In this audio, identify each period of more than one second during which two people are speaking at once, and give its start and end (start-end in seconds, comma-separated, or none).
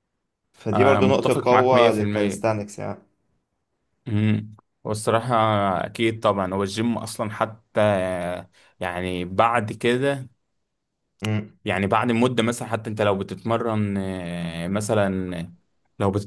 0.7-2.4